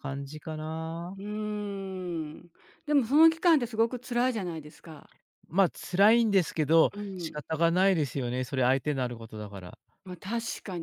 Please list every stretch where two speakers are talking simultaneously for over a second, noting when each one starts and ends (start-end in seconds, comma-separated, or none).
none